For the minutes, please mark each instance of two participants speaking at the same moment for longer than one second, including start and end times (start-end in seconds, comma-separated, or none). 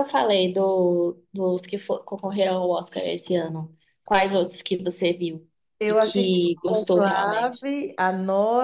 5.9-7.7